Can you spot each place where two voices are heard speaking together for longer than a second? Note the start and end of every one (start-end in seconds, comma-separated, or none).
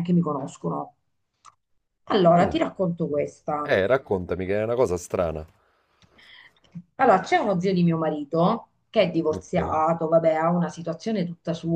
none